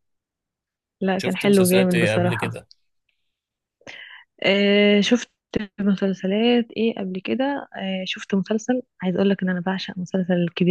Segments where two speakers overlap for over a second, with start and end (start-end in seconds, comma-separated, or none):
1.2-2.5